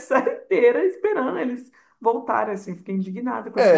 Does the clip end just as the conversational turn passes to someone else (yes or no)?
yes